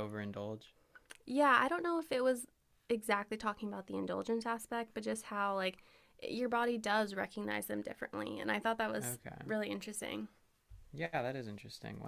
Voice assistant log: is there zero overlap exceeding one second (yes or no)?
yes